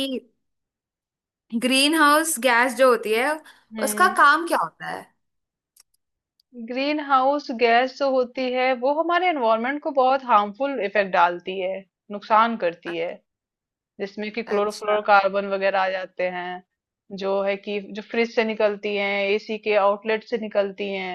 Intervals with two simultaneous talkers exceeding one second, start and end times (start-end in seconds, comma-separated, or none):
none